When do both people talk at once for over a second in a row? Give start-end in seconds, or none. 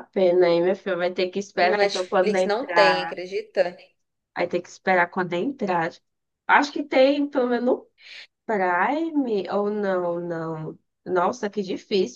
1.6-3.2